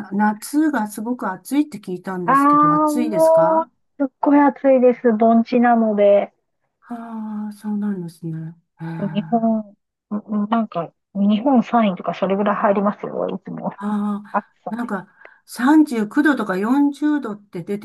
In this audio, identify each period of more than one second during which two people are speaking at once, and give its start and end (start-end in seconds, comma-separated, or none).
2.2-3.7